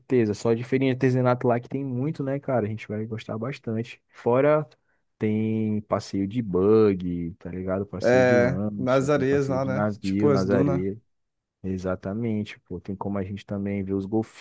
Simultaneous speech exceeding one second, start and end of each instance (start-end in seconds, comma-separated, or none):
8.0-10.8